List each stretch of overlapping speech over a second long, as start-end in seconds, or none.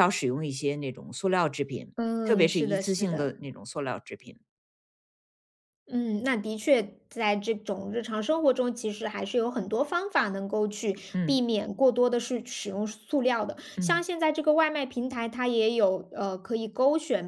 2.0-3.4